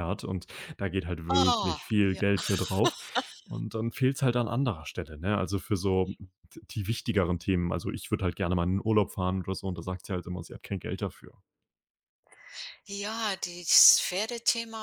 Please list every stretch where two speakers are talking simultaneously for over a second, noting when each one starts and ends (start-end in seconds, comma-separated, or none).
none